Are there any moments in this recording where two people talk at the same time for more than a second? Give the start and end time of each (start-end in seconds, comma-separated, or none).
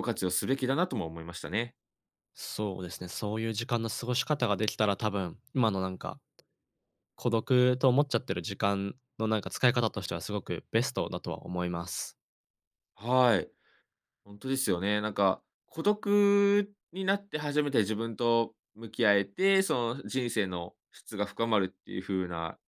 none